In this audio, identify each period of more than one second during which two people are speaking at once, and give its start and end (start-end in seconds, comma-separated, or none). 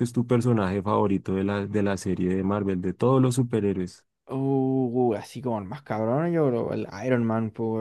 none